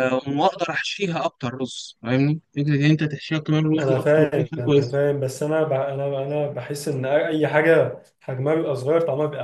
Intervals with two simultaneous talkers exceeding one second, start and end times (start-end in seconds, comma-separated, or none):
3.8-5.0